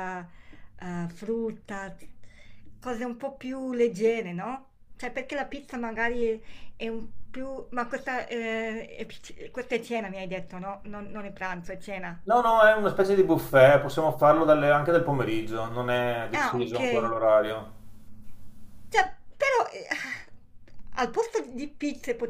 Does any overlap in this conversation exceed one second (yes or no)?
no